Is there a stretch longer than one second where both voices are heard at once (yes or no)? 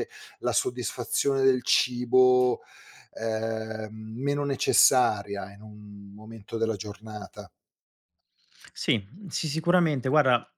no